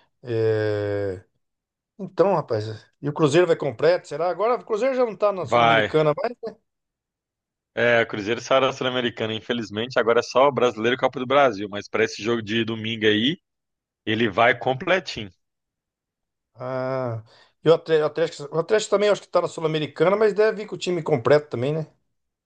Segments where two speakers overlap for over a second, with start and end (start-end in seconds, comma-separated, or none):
none